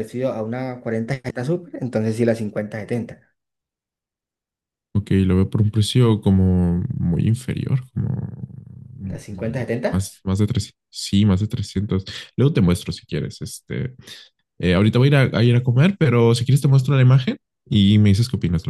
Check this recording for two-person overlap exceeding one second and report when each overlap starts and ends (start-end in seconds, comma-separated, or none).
none